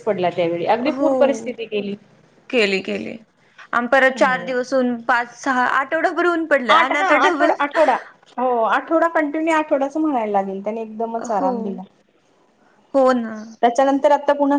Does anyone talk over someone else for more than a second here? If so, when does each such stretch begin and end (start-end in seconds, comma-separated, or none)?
none